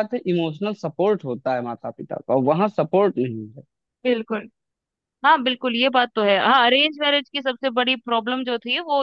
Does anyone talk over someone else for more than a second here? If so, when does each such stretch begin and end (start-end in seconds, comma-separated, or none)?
none